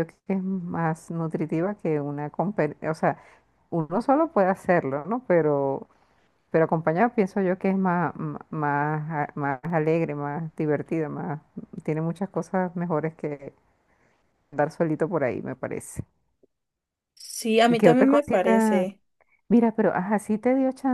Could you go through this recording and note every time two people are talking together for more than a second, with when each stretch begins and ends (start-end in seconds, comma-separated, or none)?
17.7-18.9